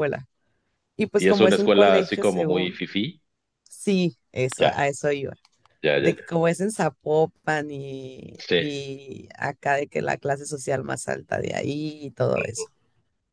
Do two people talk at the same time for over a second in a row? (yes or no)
yes